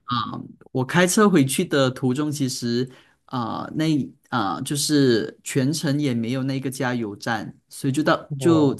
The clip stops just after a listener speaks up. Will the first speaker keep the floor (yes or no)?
yes